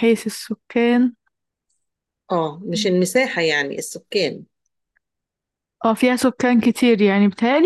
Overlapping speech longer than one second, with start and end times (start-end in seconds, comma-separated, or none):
none